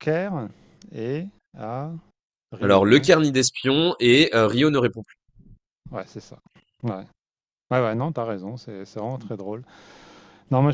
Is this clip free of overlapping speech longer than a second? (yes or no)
yes